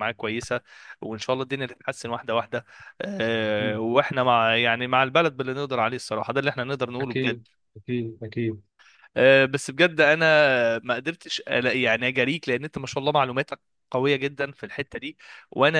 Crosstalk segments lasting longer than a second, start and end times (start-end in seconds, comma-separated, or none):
none